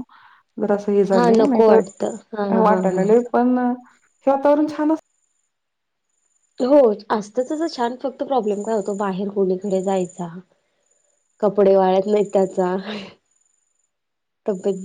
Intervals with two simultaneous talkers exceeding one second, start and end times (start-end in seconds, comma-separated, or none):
1.1-3.0